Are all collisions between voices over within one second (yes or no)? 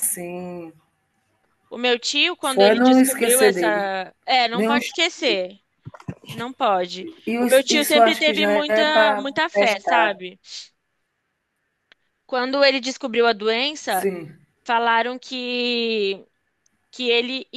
no